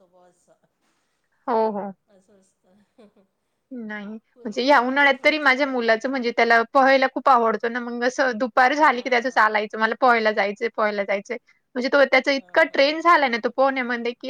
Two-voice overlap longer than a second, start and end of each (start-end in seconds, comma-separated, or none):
none